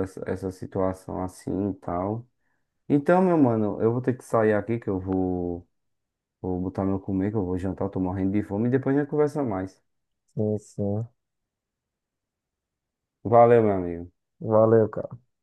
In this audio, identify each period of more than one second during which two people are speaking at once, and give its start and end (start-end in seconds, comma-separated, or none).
none